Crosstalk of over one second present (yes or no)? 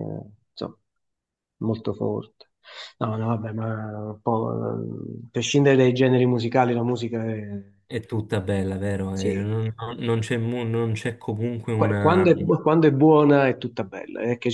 no